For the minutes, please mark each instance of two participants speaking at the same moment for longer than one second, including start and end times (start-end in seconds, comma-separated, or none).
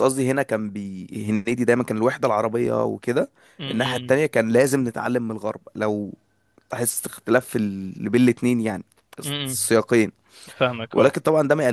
none